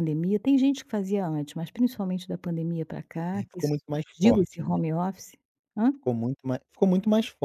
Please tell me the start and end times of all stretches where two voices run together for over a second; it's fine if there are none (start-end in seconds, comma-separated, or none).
3.3-4.7